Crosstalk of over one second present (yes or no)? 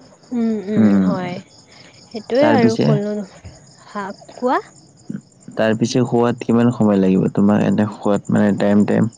no